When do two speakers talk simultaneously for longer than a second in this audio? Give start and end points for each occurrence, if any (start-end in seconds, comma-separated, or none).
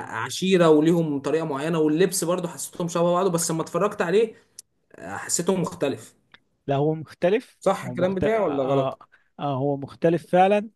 7.6-9.0